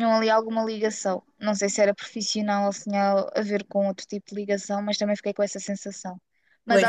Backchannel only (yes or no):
yes